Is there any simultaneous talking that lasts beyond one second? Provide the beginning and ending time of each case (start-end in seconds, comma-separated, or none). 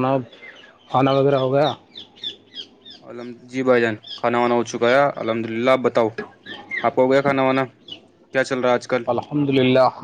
none